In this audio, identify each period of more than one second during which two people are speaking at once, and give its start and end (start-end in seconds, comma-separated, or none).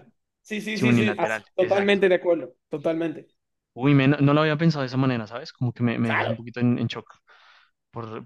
0.7-2.0